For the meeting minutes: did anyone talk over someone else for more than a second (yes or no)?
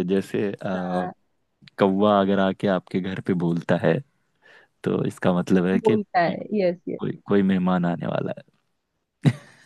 no